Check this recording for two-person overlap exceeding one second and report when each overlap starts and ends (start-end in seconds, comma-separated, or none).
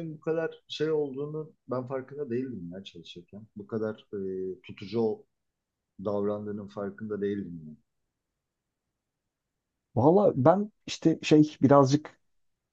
none